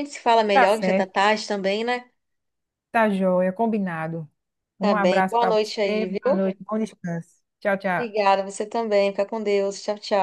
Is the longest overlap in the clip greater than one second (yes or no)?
yes